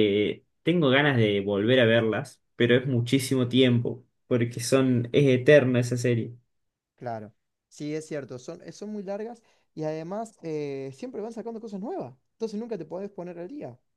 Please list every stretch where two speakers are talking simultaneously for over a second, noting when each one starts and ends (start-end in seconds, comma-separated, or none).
none